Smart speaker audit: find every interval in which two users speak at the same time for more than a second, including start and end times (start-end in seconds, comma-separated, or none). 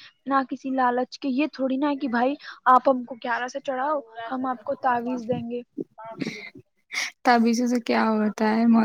none